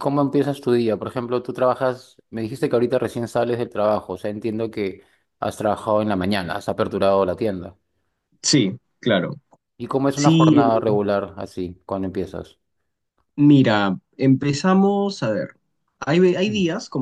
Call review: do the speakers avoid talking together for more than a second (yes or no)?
yes